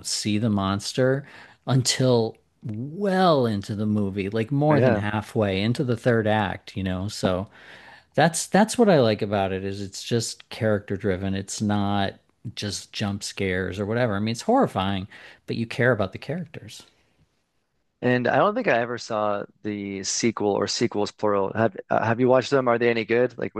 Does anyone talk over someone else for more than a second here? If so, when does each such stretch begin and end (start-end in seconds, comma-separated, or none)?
none